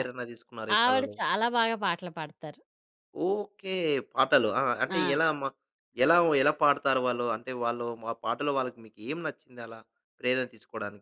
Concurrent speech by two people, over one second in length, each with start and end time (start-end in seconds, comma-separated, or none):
none